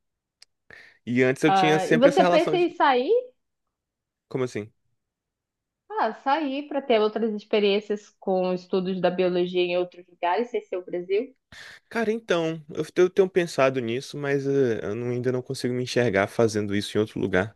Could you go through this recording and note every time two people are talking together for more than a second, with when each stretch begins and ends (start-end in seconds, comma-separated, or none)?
1.5-2.7